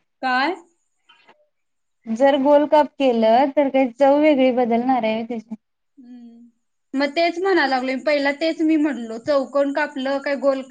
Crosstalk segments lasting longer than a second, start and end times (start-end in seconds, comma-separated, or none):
none